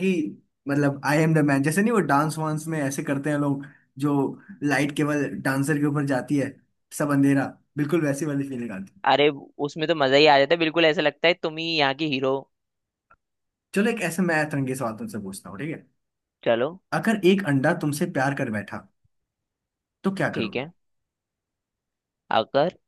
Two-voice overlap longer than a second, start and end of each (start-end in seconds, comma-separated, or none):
none